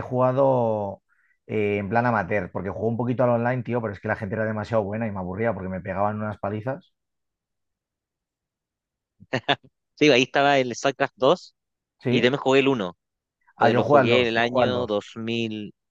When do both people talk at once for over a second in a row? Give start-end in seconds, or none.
13.6-14.9